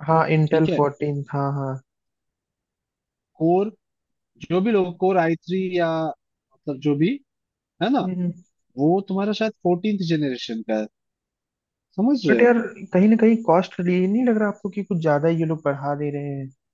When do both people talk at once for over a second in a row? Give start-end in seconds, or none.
none